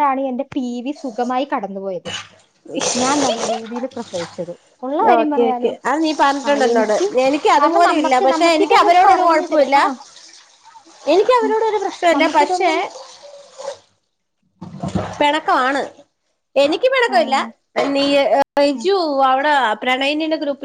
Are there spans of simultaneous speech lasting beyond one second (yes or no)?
yes